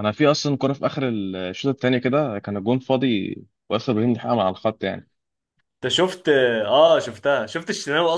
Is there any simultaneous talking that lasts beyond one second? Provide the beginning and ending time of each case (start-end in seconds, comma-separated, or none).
none